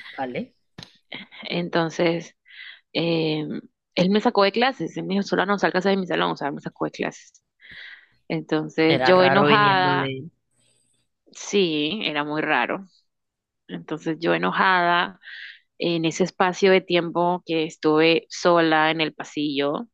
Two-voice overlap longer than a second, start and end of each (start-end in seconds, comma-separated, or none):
8.9-10.1